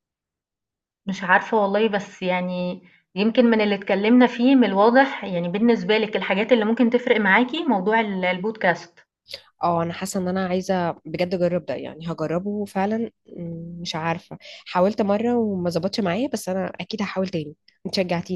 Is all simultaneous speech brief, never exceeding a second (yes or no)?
yes